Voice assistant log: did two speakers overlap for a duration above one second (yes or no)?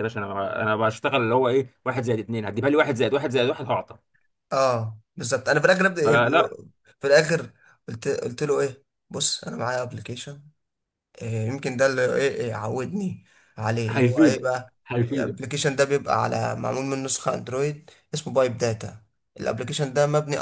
yes